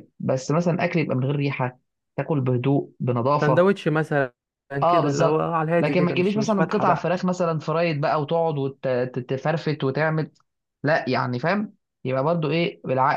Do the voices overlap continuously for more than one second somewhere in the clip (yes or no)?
yes